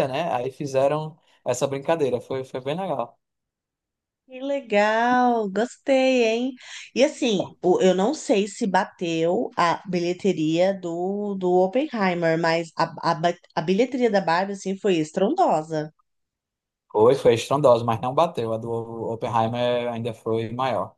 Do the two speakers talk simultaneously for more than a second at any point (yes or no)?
no